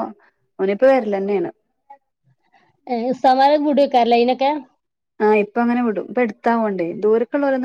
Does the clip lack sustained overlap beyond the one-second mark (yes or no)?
yes